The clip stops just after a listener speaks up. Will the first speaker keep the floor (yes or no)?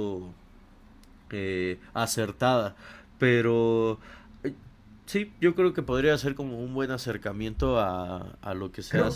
no